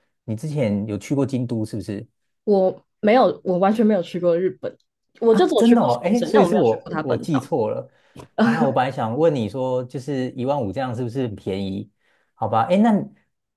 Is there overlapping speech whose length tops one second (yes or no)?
yes